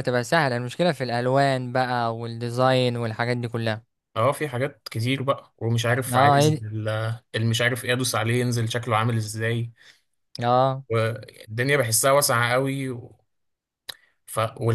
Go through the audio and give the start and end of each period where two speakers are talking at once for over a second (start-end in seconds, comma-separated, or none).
none